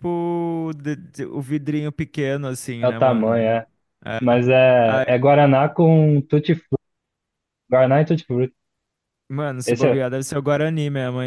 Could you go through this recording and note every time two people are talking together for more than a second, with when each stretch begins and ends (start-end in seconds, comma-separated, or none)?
none